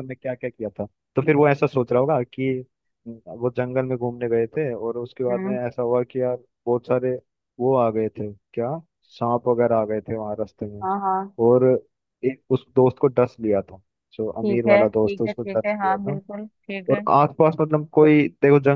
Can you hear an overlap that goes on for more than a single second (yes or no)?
yes